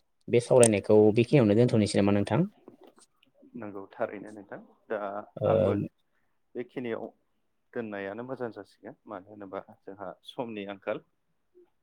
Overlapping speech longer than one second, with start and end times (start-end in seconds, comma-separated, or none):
none